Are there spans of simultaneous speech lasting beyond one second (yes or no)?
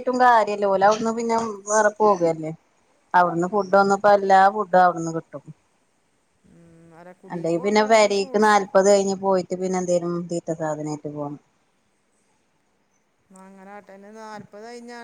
yes